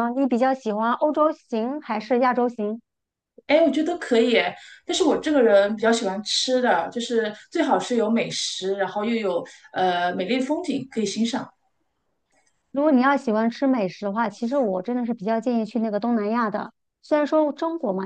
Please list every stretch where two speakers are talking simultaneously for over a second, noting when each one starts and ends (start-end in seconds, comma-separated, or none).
none